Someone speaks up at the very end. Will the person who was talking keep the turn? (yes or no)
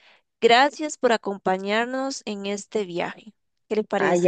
no